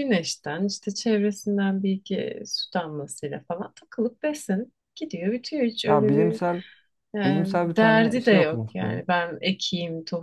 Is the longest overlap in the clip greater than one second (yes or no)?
yes